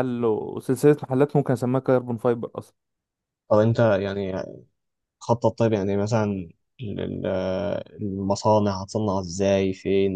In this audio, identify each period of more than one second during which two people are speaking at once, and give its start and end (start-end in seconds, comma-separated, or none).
none